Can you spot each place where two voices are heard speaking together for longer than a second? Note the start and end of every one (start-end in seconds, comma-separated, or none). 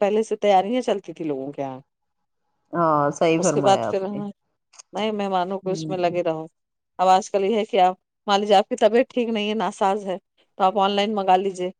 none